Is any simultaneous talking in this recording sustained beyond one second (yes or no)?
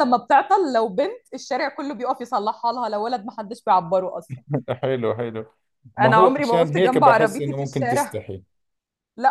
yes